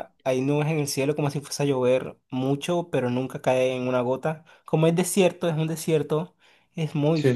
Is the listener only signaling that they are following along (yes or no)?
yes